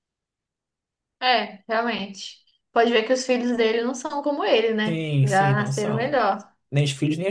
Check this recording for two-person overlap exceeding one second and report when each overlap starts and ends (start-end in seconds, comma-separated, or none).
4.8-6.2